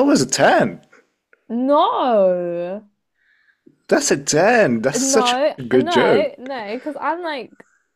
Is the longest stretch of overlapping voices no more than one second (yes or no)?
no